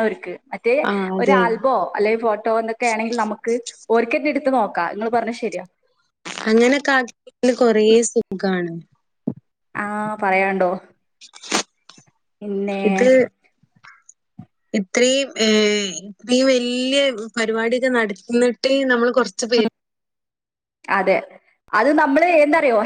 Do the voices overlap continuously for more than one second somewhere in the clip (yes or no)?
no